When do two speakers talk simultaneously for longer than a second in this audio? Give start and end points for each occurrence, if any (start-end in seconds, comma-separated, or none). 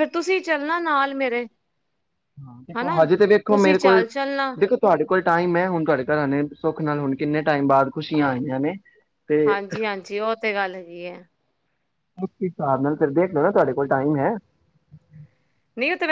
none